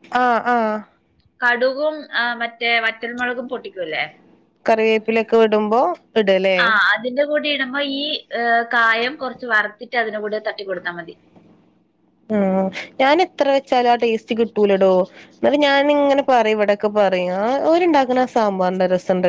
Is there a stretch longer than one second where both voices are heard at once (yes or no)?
no